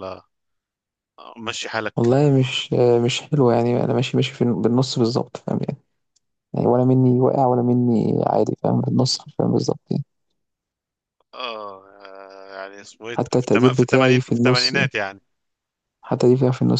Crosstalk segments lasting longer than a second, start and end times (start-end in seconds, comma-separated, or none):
13.2-14.9